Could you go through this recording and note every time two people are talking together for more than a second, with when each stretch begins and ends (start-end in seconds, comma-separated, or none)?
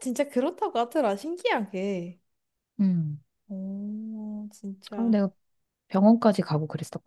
none